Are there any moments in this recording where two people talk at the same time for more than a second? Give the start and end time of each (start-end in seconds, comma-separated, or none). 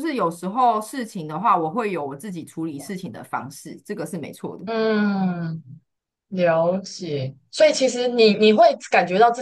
none